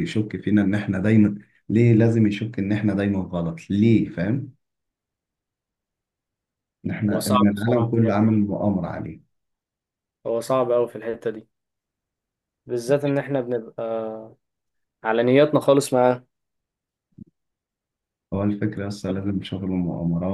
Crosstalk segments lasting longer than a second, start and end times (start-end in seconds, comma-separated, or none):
7.1-8.4